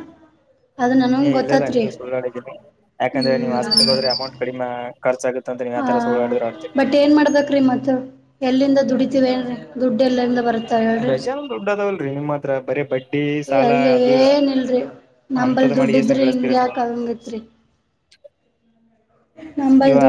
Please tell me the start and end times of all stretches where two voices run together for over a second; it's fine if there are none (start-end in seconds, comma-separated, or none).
15.4-16.7